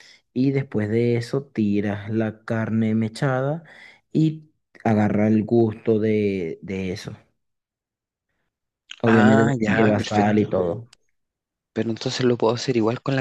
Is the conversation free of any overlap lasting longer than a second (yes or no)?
no